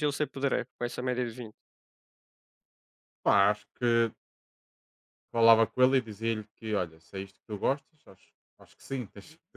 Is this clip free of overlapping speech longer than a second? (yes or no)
yes